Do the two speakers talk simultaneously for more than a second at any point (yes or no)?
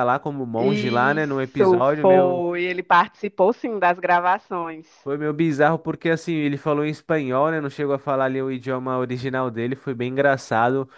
yes